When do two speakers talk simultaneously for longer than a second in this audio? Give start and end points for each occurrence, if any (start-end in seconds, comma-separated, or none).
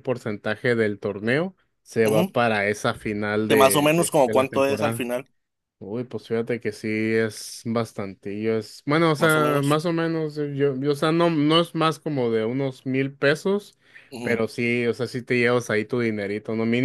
3.5-5.1